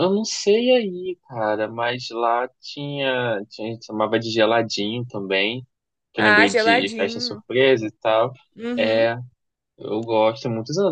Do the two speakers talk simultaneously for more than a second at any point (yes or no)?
yes